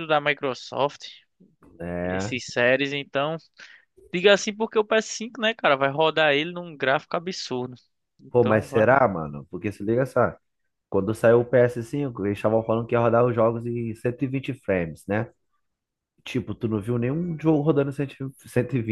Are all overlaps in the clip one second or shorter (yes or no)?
yes